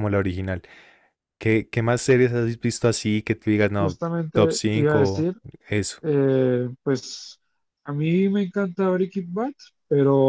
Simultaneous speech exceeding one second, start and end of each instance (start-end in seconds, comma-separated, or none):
3.8-5.3